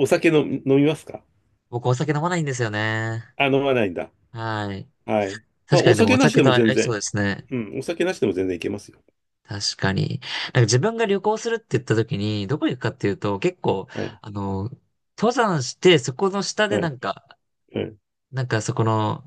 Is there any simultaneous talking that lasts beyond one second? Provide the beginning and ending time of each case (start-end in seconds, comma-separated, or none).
5.7-7.0